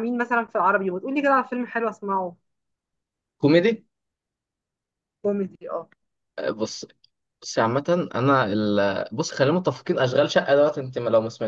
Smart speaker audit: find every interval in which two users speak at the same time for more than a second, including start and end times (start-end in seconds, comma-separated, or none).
none